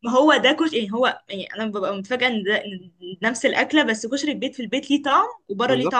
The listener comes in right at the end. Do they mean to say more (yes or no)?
yes